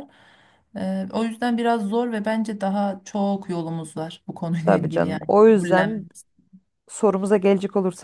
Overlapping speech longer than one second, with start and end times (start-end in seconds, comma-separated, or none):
4.6-6.1